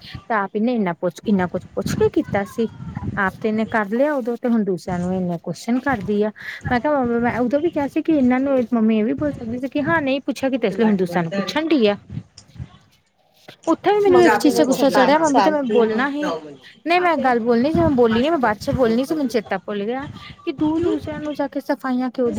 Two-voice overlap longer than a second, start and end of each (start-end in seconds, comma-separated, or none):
14.1-16.1